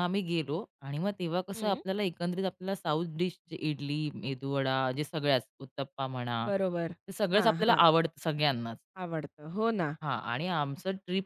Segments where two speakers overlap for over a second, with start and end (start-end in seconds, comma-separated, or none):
none